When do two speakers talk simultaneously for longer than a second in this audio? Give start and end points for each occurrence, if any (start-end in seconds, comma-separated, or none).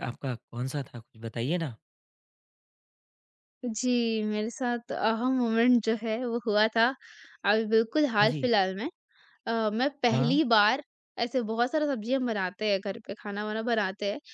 none